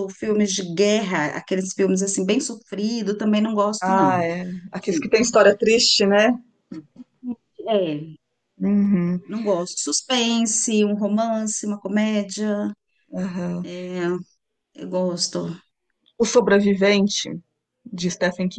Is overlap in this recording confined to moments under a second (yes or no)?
yes